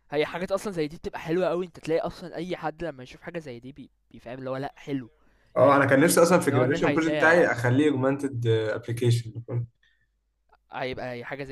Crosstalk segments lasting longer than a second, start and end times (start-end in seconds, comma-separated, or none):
5.6-7.4